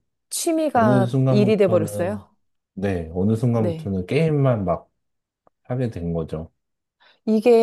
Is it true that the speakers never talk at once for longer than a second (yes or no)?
no